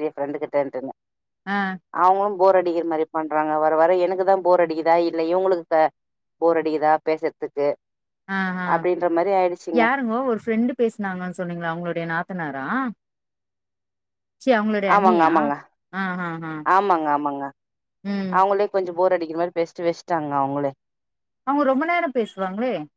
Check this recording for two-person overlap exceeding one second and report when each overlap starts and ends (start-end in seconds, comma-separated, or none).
none